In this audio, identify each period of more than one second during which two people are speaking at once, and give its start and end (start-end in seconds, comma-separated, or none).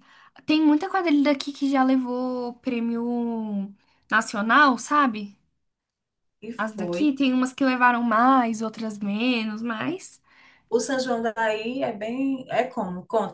none